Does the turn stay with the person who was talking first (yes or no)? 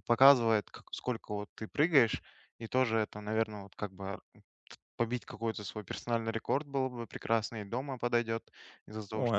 yes